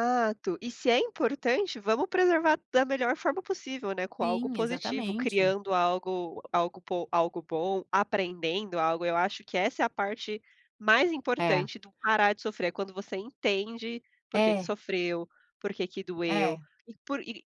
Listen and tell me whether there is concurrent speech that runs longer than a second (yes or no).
yes